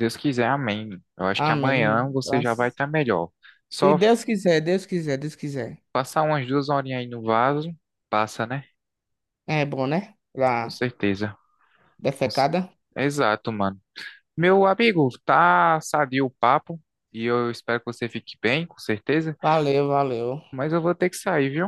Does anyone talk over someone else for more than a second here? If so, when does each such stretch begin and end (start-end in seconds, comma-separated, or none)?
1.3-2.8